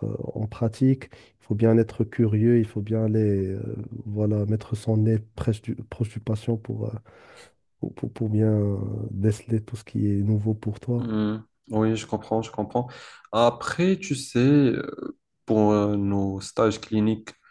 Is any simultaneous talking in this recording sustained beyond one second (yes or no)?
no